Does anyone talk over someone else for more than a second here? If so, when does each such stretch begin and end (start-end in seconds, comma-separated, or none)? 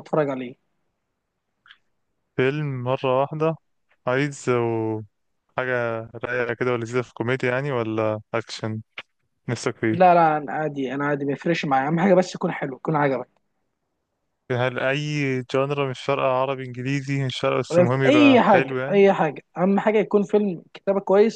17.7-19.0